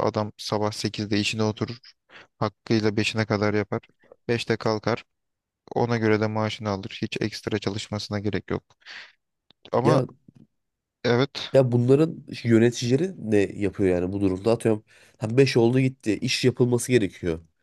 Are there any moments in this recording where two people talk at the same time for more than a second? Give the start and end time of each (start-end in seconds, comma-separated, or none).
none